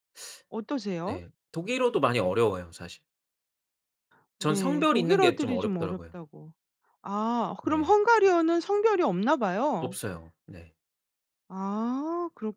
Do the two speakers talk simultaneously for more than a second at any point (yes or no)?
yes